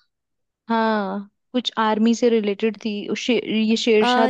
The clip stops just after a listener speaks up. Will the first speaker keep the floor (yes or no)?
no